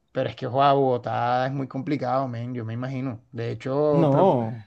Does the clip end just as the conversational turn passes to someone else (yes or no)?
no